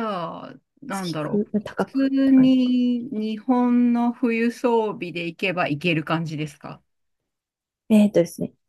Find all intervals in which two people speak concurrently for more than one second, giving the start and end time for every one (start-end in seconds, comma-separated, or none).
0.9-2.7